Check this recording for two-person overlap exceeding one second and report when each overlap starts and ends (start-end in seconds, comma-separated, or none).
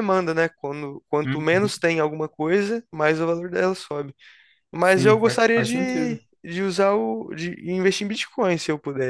4.8-6.2